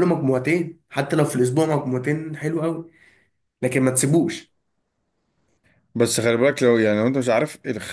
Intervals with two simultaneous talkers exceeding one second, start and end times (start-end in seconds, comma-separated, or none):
none